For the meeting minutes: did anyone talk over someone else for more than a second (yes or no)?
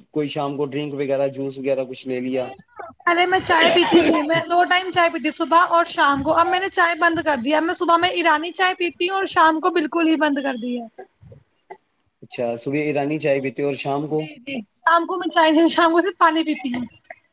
no